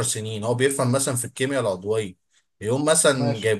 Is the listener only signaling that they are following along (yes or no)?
yes